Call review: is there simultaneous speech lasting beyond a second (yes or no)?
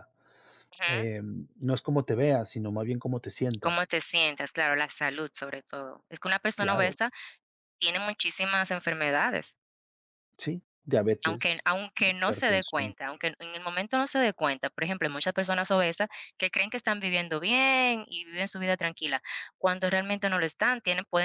yes